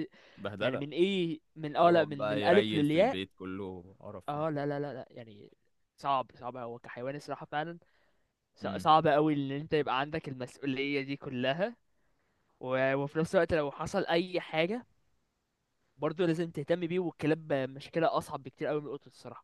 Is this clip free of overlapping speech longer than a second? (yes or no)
no